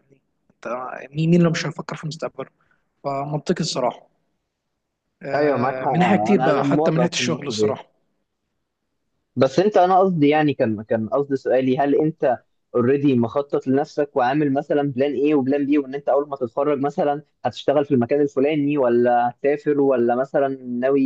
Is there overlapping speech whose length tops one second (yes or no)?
yes